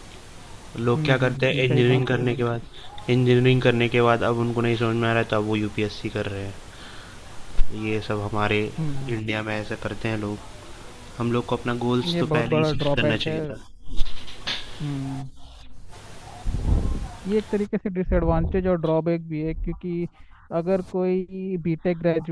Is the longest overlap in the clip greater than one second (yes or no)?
yes